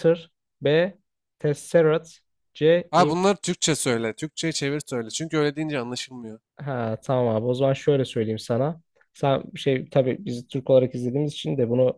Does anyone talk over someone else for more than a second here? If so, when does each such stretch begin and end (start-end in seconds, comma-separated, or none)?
none